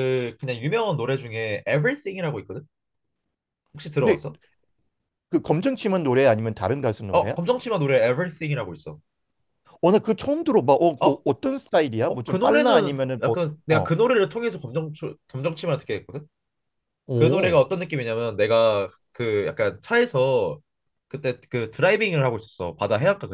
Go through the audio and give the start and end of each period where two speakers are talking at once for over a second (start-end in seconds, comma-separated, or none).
12.1-13.9